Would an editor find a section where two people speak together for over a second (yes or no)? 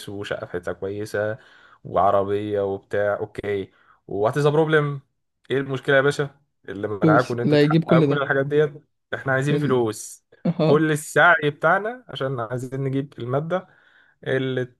yes